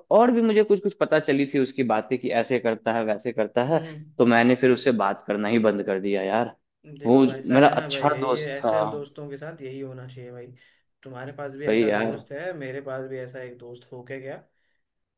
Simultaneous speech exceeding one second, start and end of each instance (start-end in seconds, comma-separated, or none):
7.0-8.8